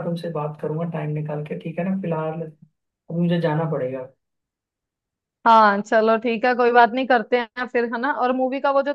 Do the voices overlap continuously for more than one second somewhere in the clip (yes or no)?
no